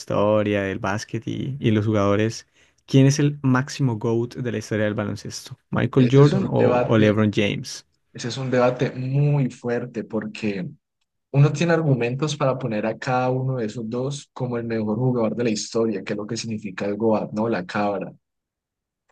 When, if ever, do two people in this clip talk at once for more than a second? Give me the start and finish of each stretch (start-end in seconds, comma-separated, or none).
6.0-7.2